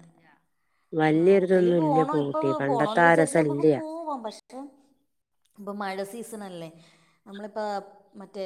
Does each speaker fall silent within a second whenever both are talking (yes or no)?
no